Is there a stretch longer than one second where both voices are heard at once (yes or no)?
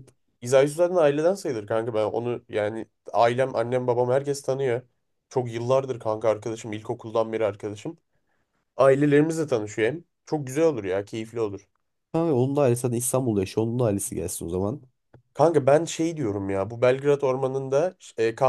no